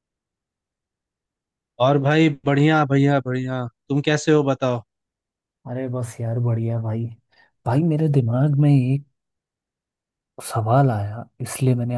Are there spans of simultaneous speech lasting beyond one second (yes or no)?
no